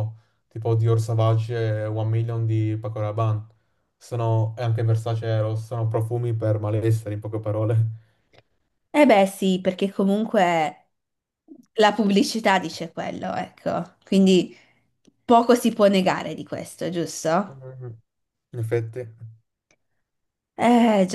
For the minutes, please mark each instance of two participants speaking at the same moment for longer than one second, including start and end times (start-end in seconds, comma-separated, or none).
none